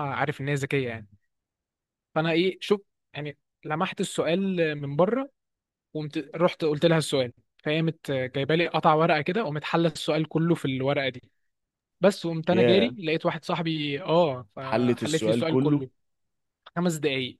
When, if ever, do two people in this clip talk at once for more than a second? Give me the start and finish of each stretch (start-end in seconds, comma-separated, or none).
14.6-15.8